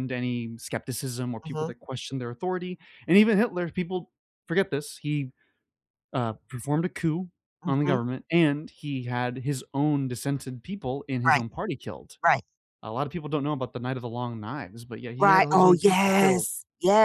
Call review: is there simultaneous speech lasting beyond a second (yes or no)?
yes